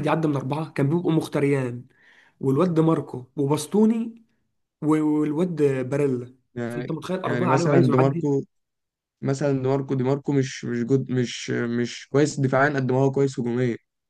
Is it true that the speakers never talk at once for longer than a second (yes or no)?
no